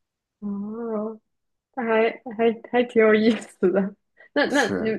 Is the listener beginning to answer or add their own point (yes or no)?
no